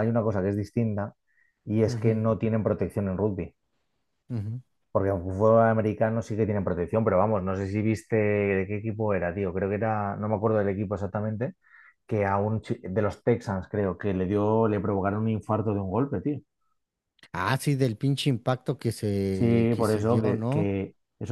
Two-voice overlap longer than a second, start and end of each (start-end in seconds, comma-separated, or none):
19.3-20.7